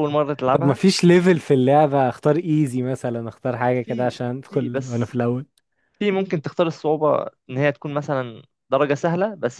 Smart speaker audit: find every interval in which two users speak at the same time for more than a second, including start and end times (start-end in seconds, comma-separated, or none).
3.7-5.2